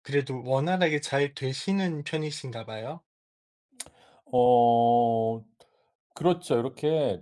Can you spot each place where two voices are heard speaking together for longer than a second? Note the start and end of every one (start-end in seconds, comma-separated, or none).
none